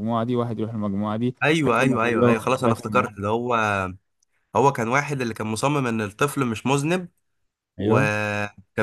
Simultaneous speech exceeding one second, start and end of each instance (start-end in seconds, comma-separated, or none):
1.7-3.1